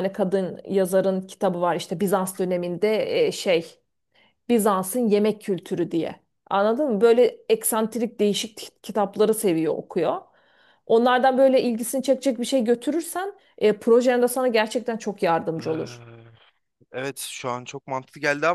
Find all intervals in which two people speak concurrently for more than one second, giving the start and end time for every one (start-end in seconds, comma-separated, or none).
none